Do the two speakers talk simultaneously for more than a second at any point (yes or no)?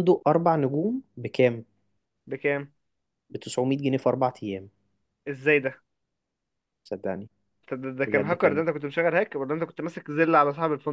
no